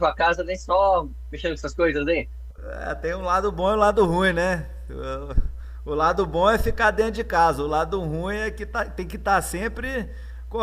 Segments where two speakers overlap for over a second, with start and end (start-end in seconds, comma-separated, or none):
none